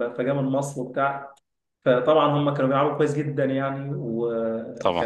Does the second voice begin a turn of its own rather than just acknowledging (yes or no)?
no